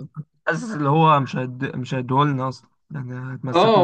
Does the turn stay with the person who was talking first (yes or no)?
no